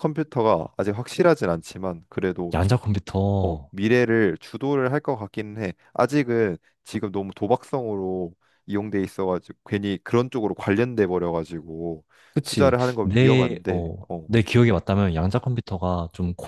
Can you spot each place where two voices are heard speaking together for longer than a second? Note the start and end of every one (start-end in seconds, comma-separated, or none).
12.4-14.3